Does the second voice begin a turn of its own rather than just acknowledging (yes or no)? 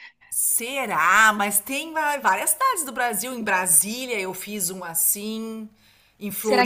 yes